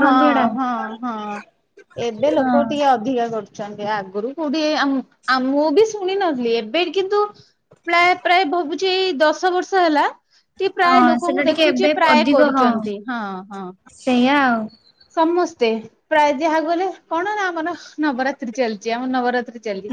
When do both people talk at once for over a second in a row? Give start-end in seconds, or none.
10.9-12.7